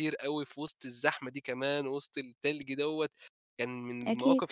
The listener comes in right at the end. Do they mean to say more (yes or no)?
no